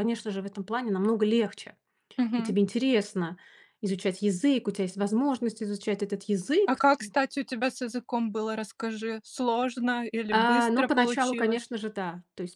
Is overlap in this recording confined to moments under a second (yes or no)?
no